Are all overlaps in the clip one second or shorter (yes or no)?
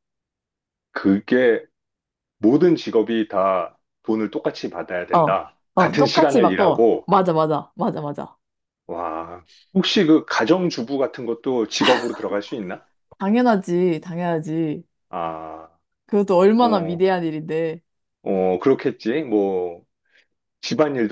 no